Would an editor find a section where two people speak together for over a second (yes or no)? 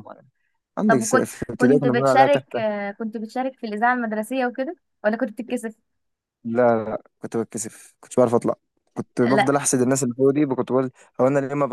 yes